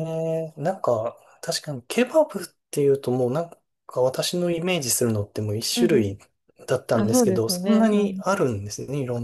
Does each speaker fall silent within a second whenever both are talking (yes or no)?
no